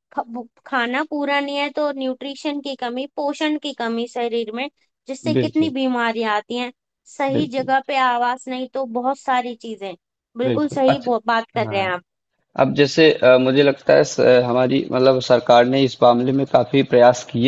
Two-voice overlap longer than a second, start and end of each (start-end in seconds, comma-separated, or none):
10.4-11.9